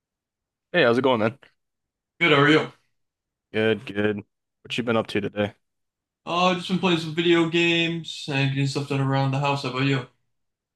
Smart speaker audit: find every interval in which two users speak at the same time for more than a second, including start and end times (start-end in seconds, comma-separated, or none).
none